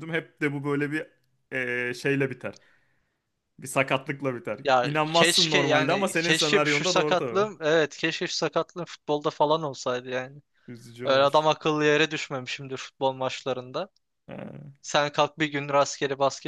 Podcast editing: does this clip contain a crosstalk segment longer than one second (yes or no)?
yes